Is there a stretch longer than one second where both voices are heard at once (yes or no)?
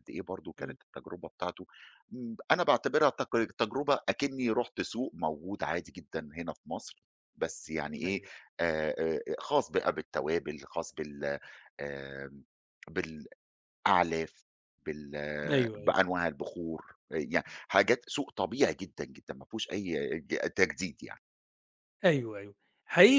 no